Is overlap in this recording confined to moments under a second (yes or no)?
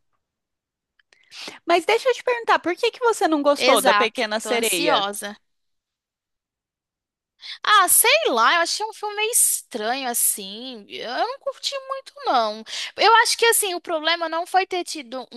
no